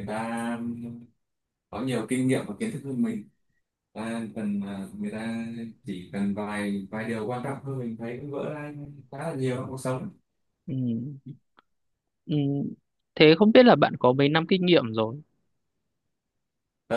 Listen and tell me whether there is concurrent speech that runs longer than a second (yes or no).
no